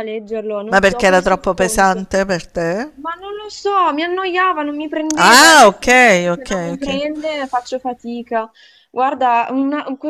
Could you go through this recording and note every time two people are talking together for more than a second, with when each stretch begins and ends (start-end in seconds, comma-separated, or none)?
0.7-2.1, 5.2-7.0